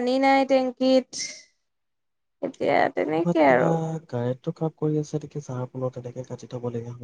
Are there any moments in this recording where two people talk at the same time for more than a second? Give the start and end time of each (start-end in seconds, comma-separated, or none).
none